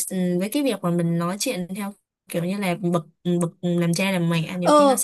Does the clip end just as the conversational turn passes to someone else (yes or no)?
yes